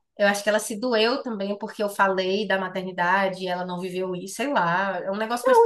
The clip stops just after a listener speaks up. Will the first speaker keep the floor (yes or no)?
no